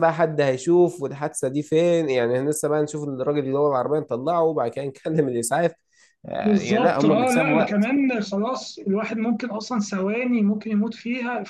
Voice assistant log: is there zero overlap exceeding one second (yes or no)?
no